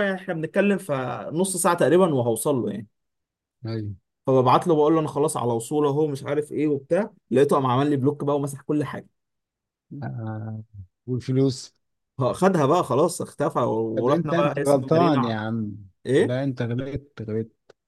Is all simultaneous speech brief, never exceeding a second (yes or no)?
no